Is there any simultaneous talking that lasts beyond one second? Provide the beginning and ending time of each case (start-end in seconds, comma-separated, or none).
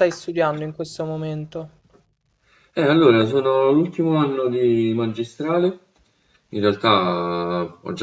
none